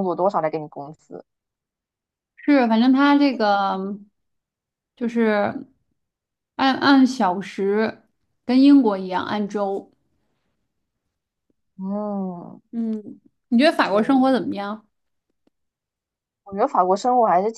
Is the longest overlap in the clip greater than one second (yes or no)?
no